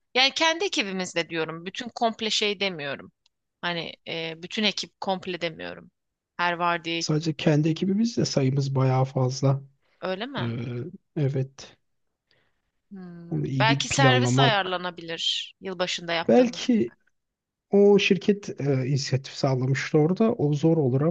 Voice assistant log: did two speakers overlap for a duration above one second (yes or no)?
yes